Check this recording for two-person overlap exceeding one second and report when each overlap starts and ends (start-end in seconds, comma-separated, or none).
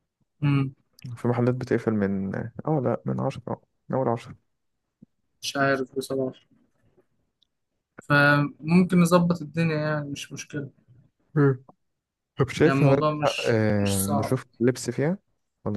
12.6-14.4